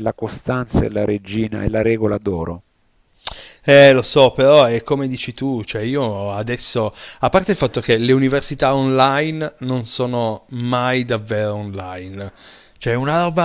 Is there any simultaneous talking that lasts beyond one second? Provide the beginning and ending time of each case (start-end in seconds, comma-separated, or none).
none